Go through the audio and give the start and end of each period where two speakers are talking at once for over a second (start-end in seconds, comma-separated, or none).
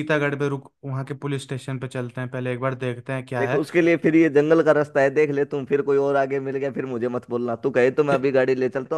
none